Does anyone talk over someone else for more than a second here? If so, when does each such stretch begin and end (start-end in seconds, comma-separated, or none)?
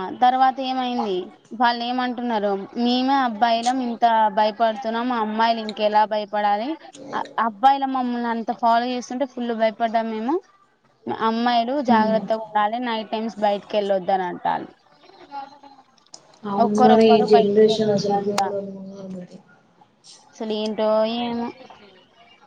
16.6-18.4